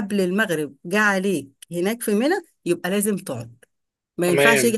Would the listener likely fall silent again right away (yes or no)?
yes